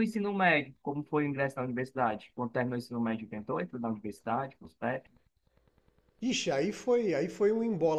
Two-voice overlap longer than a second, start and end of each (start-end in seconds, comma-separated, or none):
none